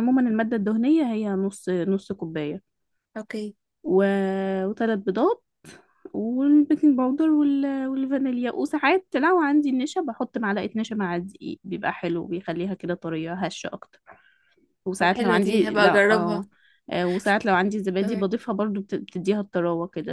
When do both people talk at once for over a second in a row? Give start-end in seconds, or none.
15.0-16.4